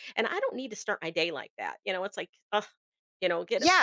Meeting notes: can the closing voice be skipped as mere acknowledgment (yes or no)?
no